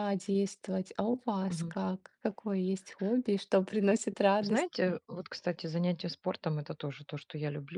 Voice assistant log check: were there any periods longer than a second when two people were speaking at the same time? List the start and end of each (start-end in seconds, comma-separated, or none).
none